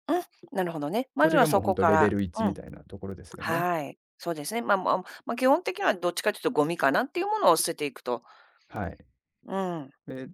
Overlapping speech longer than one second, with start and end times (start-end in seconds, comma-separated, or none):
1.2-2.6